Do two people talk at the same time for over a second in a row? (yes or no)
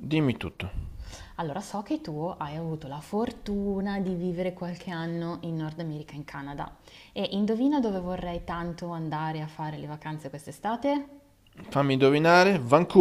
no